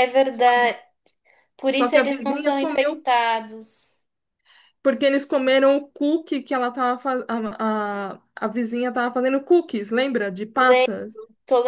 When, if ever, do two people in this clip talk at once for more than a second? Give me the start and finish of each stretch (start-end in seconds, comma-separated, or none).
1.7-3.0